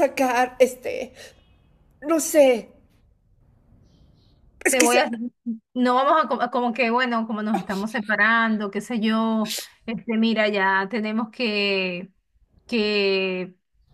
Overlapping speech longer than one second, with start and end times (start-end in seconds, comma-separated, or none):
none